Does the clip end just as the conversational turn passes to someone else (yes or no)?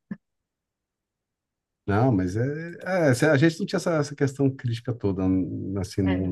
no